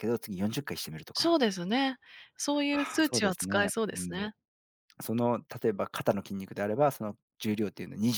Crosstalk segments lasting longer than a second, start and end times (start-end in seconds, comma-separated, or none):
2.7-4.3